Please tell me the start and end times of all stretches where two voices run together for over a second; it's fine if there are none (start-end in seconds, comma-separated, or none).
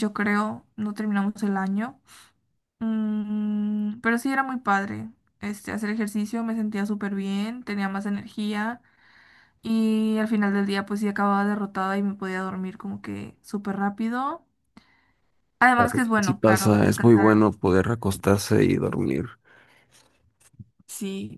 15.8-17.3